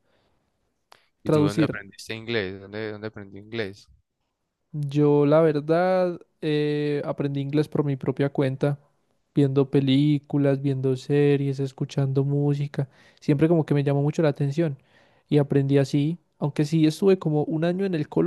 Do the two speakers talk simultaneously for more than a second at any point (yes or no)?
no